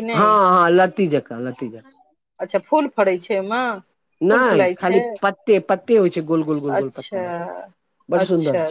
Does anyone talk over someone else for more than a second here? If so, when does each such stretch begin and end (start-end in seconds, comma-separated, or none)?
none